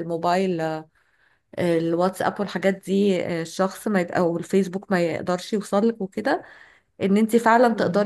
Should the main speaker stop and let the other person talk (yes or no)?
no